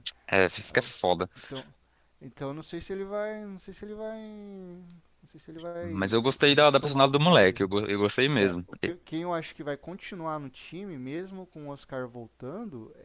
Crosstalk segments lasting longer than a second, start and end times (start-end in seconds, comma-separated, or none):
5.8-7.6